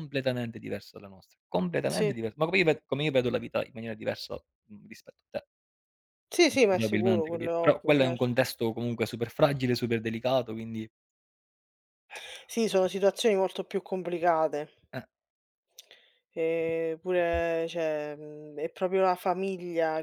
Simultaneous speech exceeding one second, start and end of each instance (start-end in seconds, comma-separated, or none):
6.5-8.4